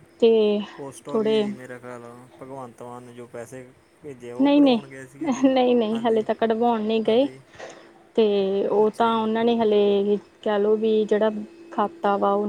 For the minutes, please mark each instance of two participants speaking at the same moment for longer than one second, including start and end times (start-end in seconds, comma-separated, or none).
none